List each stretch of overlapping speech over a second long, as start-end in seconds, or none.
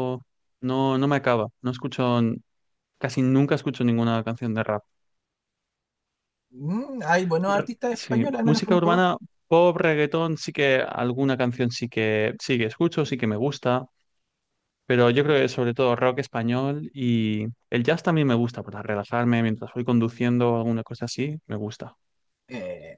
7.5-9.0